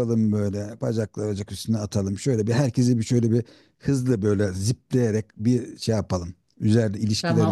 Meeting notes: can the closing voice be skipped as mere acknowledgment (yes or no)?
no